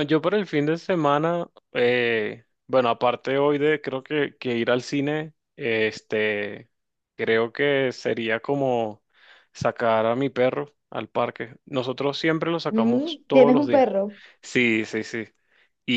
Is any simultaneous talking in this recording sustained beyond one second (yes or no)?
yes